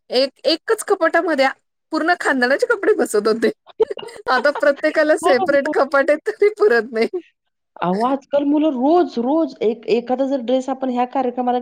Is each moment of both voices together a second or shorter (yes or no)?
yes